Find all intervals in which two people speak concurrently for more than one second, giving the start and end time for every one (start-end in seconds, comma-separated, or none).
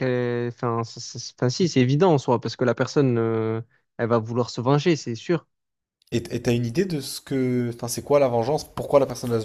none